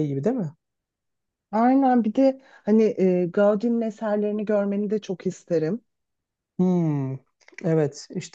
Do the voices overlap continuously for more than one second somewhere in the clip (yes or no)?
no